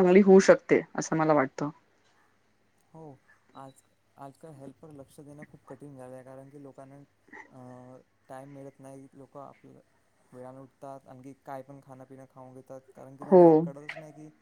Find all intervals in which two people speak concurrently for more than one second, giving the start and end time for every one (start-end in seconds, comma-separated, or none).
none